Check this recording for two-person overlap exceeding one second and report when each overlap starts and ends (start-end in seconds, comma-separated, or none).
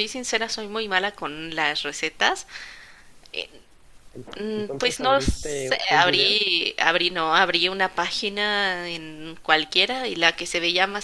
4.4-6.4